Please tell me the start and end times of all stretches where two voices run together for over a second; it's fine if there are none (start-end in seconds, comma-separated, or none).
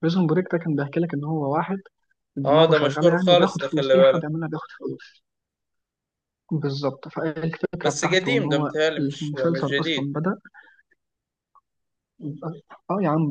2.5-4.3, 7.8-10.1